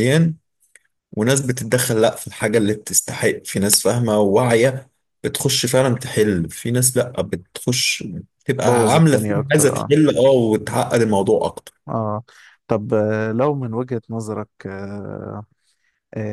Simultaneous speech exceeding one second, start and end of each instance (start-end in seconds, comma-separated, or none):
8.6-9.9